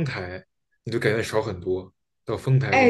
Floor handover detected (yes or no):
yes